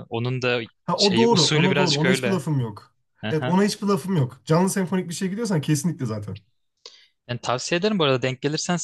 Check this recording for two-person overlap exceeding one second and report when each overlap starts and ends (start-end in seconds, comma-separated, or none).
0.8-2.4